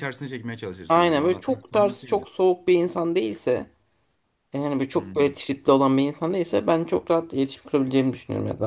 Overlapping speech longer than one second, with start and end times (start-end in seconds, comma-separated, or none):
0.9-2.3